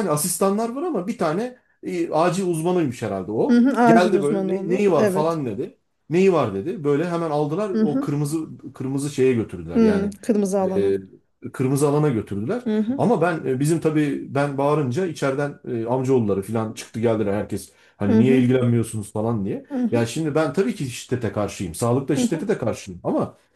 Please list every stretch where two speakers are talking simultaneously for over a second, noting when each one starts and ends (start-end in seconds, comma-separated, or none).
3.5-5.4